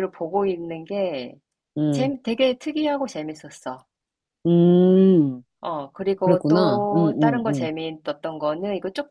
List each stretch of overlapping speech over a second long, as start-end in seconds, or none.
6.2-7.7